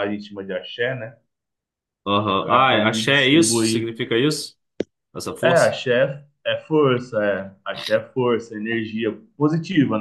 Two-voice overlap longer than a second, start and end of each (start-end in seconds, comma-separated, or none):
2.3-3.9